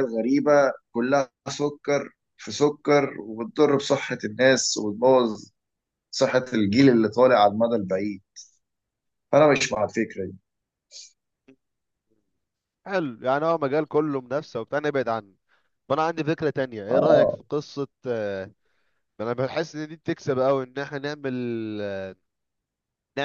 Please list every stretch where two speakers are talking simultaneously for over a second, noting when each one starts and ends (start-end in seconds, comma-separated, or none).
none